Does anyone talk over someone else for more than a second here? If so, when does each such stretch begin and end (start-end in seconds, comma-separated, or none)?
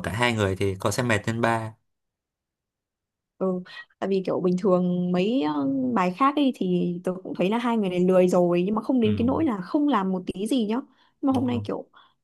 none